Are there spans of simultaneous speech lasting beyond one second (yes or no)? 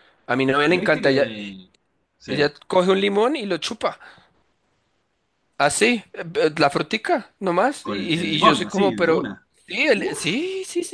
yes